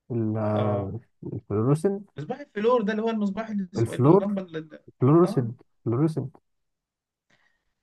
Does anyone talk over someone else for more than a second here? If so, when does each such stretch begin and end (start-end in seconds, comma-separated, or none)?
none